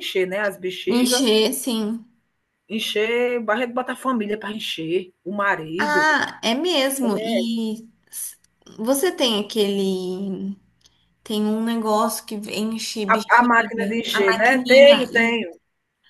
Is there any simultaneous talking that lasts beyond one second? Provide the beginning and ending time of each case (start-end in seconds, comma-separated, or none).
13.1-15.4